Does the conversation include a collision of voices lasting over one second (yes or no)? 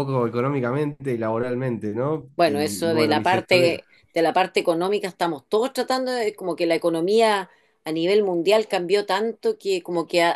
yes